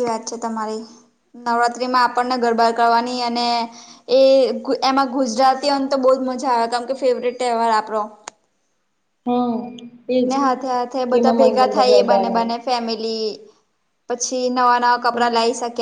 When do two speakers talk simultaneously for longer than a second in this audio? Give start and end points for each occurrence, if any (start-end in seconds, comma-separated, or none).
11.1-12.4